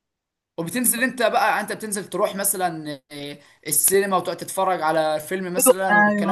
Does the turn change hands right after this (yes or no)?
yes